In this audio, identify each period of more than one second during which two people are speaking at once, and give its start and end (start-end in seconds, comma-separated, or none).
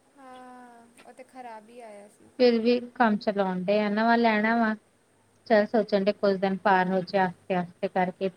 none